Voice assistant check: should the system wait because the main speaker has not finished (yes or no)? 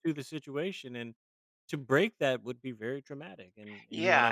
no